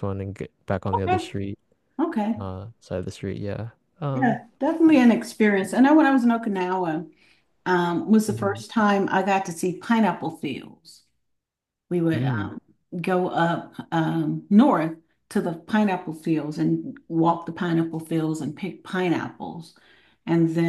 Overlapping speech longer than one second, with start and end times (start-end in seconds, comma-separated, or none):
none